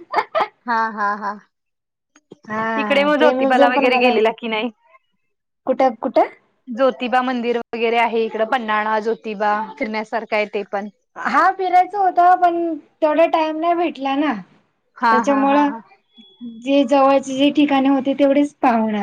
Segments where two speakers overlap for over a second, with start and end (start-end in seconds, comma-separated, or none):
2.8-4.2